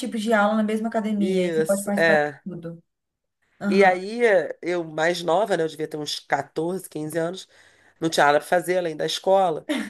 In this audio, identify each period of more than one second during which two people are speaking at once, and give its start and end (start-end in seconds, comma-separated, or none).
1.2-2.4